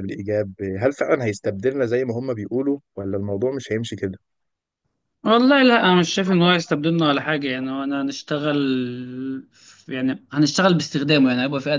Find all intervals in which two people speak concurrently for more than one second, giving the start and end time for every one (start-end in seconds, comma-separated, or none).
none